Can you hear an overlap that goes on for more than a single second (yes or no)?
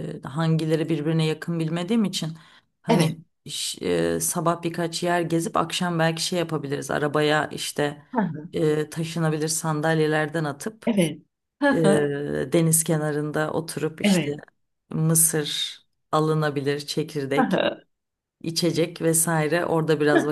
no